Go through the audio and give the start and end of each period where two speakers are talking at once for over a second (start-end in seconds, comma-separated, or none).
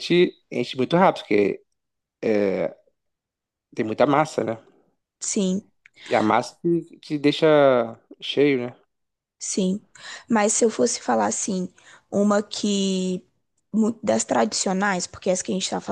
none